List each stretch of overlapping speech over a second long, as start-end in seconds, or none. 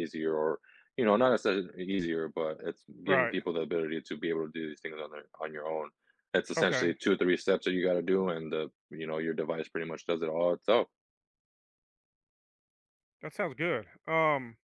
none